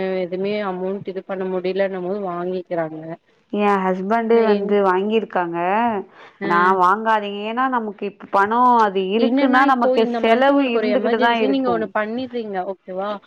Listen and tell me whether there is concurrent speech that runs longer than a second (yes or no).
yes